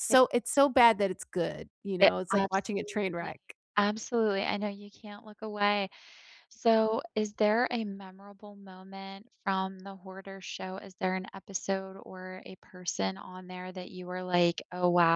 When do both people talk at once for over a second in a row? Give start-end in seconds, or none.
2.0-3.3